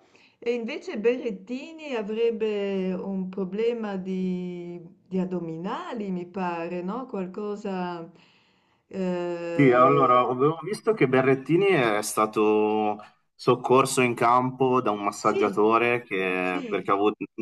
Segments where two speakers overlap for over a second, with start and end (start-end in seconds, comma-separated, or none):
none